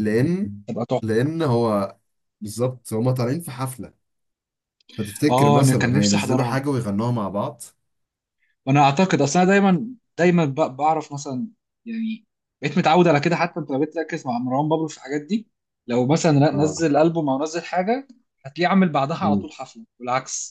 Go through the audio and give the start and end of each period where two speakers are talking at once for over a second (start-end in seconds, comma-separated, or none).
5.3-6.6